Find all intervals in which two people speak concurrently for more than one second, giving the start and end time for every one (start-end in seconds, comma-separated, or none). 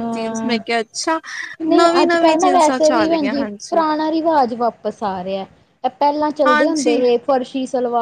1.8-3.4